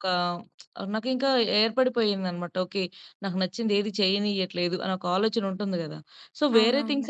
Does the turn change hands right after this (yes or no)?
no